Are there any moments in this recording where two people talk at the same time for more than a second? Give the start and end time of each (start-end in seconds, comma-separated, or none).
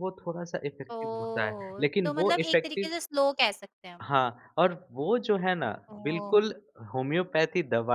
0.9-2.9